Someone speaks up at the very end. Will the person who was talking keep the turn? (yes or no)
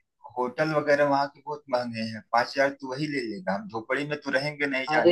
no